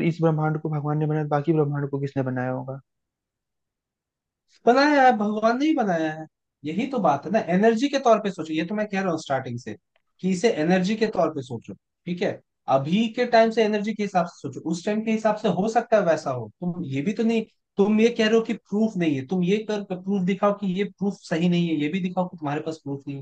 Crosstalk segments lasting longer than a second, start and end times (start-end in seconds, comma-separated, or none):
none